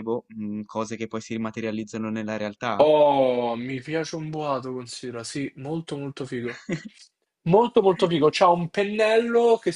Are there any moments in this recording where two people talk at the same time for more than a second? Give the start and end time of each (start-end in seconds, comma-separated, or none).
none